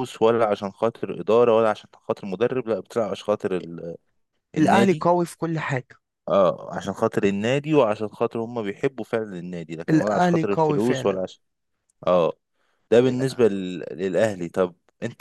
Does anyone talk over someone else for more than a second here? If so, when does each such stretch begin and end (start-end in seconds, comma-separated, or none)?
9.9-11.2